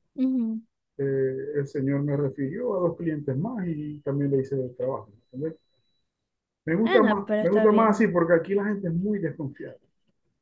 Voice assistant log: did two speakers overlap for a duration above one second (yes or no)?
yes